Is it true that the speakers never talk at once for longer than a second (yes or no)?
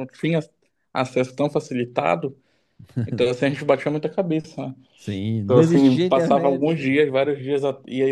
no